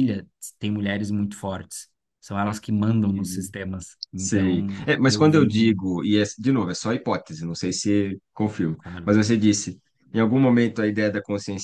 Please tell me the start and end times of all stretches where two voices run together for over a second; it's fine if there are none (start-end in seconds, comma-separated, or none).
4.1-5.8